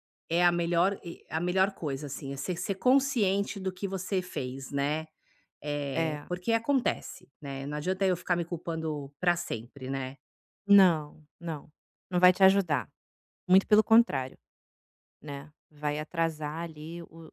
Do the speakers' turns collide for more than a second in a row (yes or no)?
no